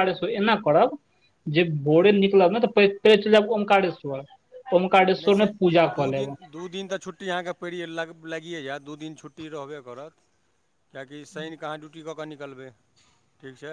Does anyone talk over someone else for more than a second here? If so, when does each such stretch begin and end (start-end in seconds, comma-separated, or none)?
none